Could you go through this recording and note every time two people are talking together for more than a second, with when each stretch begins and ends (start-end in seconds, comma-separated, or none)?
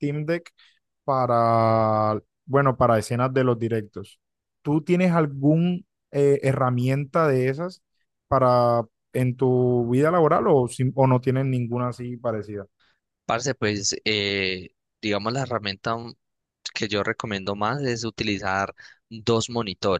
none